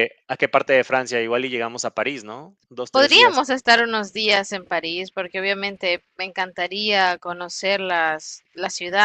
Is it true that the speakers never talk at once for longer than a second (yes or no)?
yes